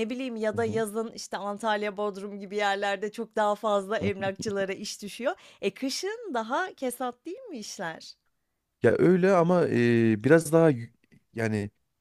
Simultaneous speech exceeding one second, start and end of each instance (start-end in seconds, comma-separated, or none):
none